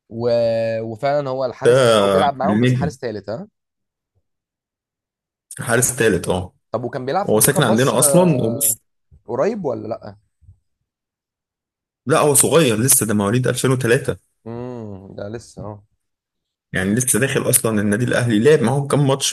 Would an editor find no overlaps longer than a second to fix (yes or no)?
no